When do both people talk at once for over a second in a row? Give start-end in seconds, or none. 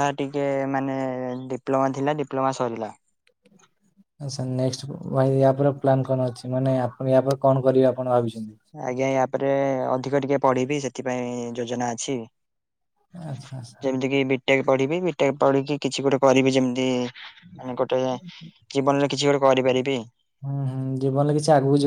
none